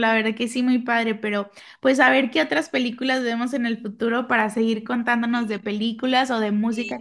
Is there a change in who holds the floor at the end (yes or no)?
yes